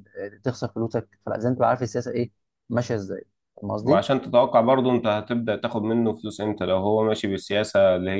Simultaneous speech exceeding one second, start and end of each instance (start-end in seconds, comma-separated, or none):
none